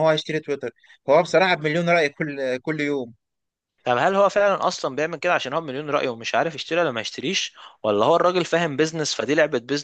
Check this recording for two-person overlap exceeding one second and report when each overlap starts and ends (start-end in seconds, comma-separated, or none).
none